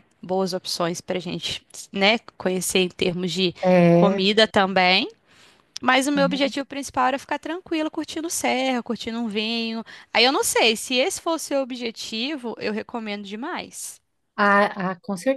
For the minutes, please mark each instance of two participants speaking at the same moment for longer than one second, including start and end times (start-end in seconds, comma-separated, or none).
none